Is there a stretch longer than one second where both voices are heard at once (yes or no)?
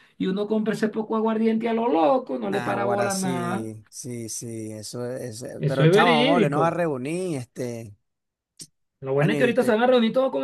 yes